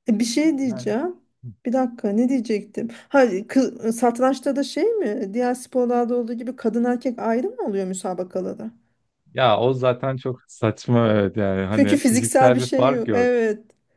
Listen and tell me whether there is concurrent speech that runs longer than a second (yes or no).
yes